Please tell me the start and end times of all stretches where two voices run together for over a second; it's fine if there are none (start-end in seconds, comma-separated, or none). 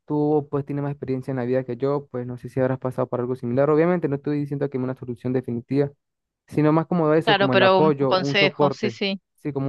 7.2-9.0